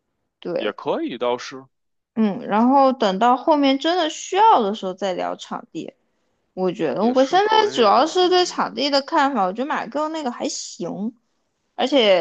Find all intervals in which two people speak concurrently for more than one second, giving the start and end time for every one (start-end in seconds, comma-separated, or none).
7.0-8.6